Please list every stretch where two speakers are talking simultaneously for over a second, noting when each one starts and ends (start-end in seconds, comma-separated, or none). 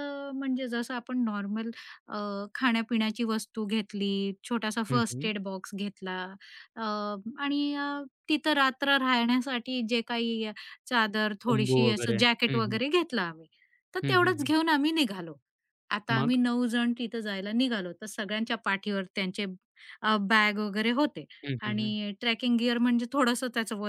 11.5-12.8